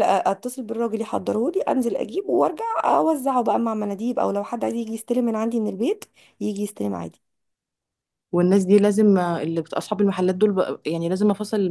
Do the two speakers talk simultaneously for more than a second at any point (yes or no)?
no